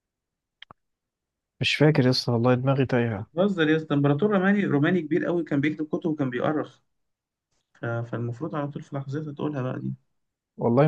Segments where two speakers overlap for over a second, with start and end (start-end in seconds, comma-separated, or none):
none